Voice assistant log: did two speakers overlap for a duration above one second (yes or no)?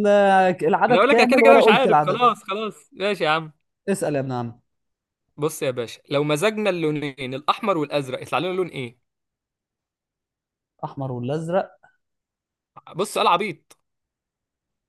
yes